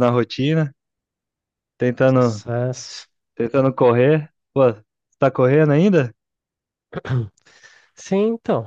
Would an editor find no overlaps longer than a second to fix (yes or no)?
yes